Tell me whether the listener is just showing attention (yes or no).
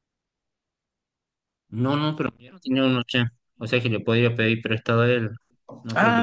no